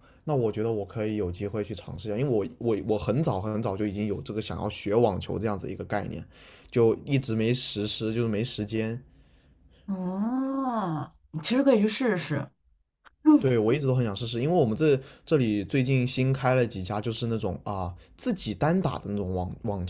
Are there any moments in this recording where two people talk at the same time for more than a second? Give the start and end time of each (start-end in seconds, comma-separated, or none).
none